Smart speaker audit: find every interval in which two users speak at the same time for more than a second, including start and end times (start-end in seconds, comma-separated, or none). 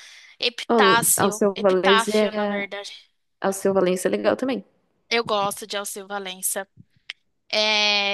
0.7-2.7